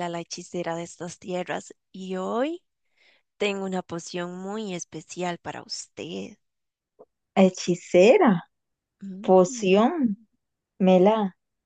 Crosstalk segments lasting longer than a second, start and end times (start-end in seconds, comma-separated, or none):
none